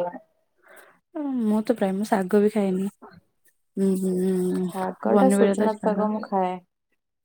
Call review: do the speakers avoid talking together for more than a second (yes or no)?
no